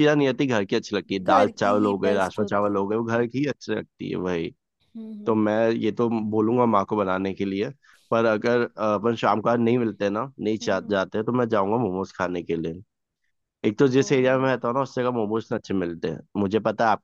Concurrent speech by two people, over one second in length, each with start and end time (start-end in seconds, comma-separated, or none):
1.2-2.8